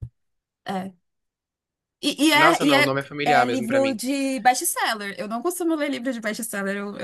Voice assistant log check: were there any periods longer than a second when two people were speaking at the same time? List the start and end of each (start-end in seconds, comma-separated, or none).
2.3-4.0